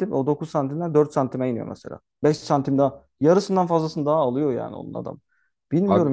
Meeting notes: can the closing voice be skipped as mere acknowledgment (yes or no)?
yes